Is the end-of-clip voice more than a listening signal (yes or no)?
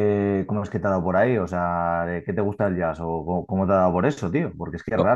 no